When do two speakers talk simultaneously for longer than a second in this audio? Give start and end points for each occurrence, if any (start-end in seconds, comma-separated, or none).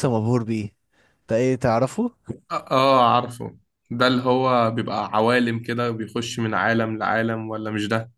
none